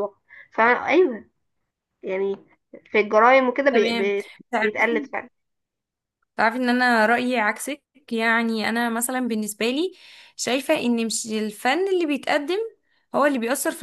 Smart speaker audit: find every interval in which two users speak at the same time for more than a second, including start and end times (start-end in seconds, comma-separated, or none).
none